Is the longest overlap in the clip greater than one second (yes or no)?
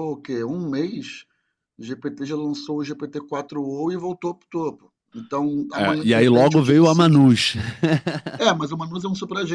yes